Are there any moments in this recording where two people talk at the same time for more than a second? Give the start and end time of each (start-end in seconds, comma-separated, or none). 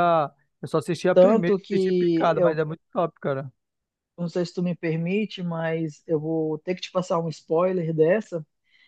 1.1-2.6